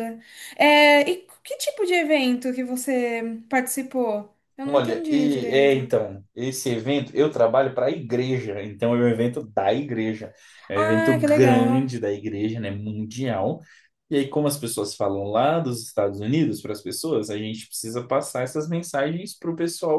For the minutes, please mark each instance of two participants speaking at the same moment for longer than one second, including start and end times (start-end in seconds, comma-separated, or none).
4.6-5.9, 10.8-11.9